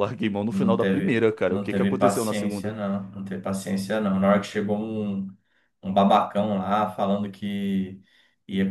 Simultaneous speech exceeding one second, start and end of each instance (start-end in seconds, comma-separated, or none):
0.5-2.7